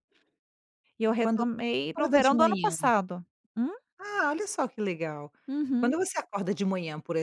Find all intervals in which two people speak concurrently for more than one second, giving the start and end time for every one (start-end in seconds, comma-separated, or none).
1.2-2.8